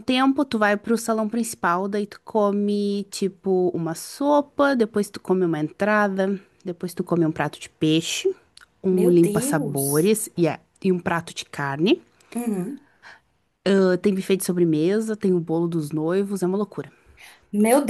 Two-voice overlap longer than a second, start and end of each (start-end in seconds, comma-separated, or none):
8.9-10.1